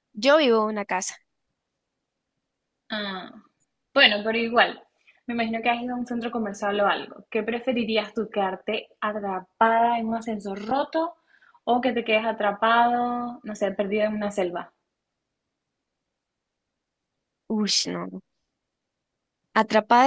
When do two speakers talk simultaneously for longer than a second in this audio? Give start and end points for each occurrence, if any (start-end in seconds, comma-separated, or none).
none